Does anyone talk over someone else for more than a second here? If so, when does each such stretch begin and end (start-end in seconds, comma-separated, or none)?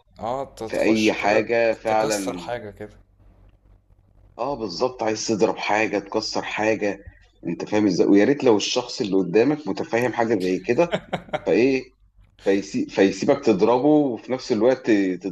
0.6-2.5